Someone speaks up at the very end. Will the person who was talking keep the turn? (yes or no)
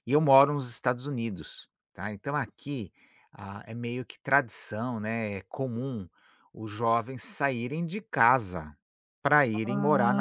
no